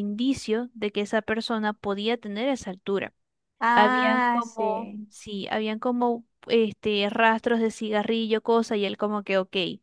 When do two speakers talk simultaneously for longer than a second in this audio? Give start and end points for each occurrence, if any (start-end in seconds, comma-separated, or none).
3.7-5.1